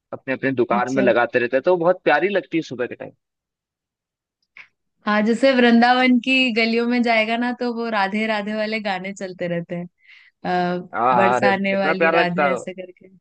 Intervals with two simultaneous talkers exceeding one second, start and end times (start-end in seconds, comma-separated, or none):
11.2-12.7